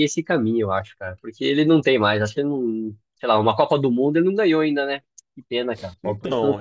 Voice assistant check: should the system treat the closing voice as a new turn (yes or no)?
yes